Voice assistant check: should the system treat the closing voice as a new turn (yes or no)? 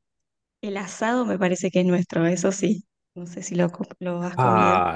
yes